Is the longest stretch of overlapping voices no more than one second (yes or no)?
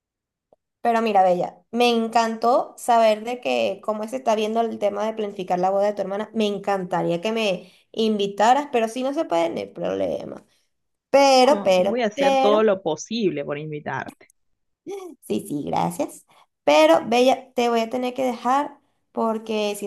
no